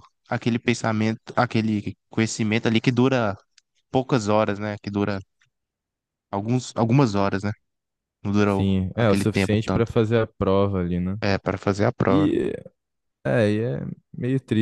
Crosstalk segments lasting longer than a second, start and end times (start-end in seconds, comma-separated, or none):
8.5-9.9